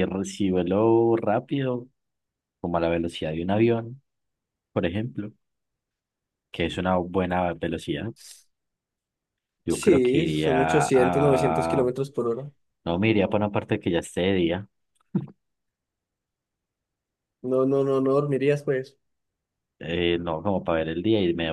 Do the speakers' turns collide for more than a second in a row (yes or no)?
yes